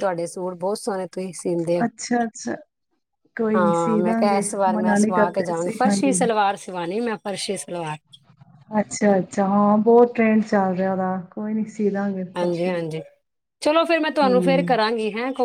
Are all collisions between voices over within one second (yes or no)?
no